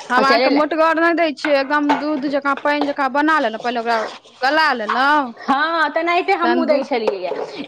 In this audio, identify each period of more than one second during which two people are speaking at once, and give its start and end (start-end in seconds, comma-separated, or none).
none